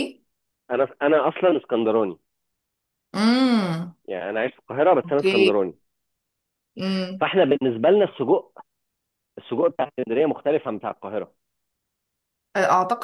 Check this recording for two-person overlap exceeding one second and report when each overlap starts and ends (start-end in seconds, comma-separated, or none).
none